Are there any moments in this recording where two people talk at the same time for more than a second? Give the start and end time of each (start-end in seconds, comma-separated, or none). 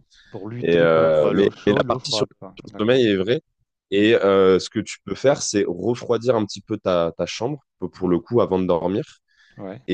0.6-3.0